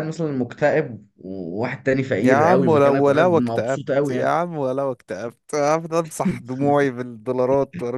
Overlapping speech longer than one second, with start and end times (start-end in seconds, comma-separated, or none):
2.2-4.3